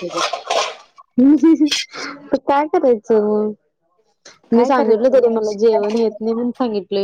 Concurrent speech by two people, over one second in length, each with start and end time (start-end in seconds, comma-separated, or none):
4.5-6.3